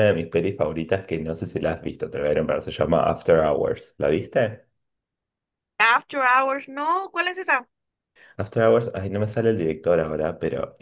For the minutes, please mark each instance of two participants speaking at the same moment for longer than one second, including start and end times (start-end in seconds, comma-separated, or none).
none